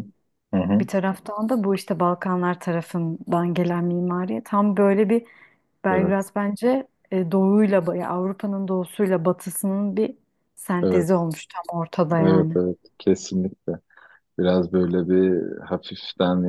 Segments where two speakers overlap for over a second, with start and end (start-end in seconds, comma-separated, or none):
none